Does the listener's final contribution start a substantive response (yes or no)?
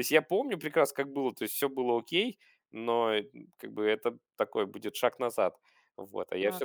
yes